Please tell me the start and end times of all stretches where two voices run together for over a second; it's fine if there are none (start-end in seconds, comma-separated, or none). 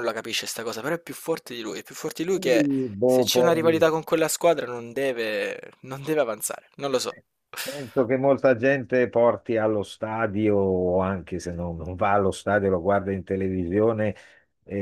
2.3-3.8